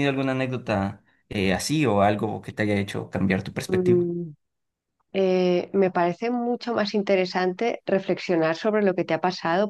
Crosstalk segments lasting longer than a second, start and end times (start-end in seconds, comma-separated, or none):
none